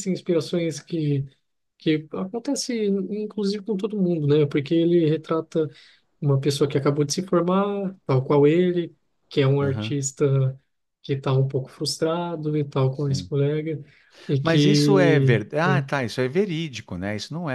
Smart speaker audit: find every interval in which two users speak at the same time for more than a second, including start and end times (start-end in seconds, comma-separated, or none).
14.4-15.9